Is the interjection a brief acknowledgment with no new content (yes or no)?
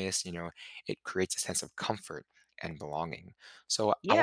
no